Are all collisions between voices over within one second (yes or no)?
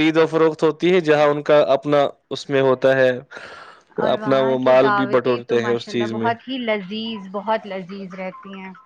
no